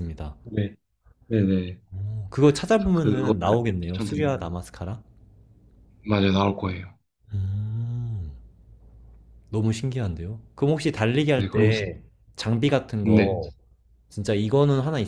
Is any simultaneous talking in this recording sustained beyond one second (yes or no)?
yes